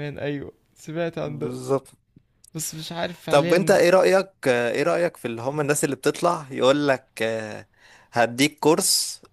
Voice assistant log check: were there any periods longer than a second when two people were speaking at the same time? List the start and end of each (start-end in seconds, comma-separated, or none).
none